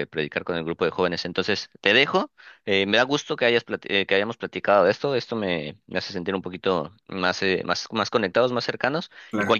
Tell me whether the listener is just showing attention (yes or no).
yes